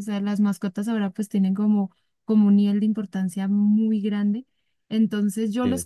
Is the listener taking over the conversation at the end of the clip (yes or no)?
no